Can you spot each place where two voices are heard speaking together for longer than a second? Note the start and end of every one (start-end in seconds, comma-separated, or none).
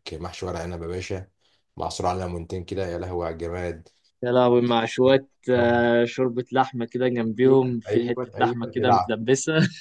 7.4-9.2